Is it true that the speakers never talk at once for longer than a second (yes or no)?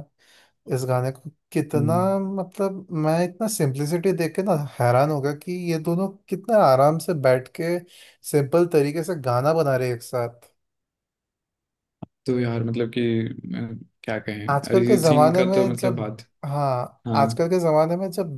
no